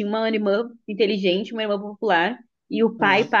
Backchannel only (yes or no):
yes